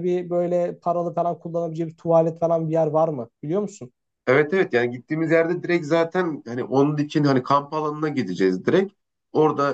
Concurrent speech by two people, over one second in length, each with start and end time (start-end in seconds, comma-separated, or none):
none